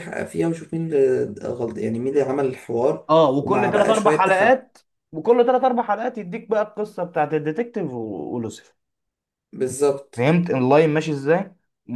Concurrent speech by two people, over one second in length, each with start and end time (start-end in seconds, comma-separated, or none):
3.1-4.6